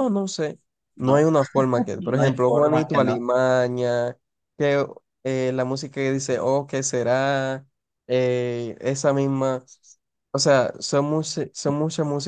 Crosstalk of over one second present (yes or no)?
yes